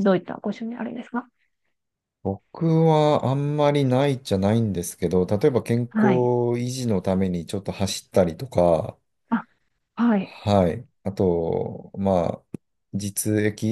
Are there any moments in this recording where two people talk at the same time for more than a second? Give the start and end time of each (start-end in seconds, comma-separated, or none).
none